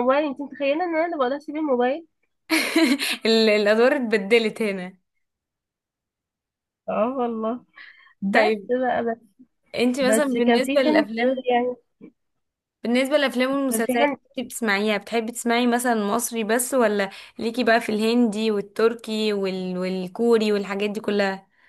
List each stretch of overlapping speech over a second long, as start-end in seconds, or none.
10.0-11.5